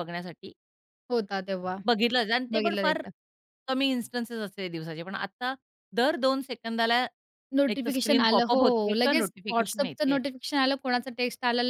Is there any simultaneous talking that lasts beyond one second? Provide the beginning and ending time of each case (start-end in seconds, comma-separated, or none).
7.7-10.2